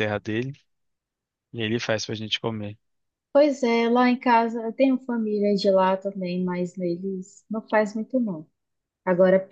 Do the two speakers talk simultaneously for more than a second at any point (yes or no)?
no